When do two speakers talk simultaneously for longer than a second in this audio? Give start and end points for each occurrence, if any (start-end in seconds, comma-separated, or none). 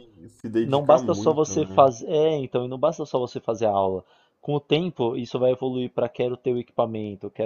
0.6-1.9